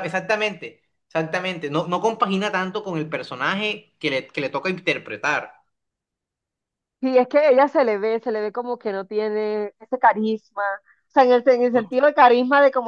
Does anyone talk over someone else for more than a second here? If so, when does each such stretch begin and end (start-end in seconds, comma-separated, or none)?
none